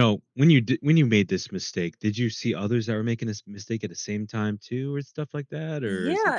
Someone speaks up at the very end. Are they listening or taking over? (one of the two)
taking over